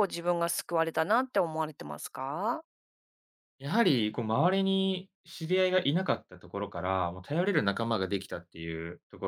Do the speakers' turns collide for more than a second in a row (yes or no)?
no